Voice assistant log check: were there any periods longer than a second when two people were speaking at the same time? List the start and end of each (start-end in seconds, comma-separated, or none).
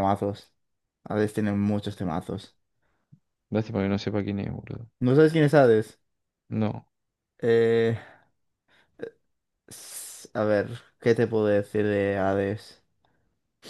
none